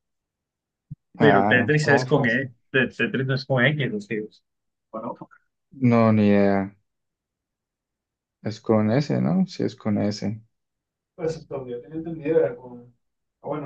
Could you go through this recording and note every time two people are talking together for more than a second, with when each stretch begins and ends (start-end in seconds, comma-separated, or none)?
1.2-2.5